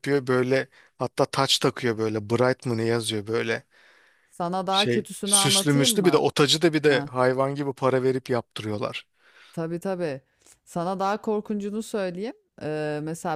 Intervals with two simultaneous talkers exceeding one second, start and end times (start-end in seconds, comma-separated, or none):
4.7-6.2